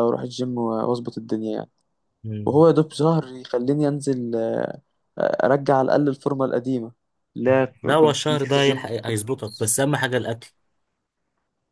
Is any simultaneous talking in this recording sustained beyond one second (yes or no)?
yes